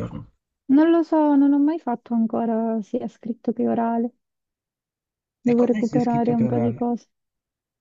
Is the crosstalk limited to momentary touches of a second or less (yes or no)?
no